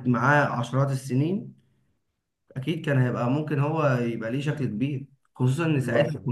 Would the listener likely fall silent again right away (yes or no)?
yes